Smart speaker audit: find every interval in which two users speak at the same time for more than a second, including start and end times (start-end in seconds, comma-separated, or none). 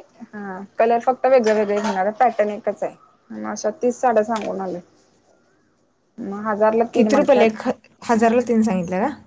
none